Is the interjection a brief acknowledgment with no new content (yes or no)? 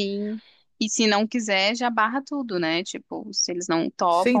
no